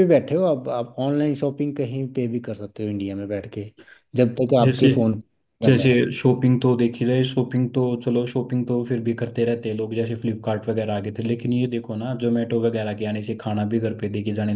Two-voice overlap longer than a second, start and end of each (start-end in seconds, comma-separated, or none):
none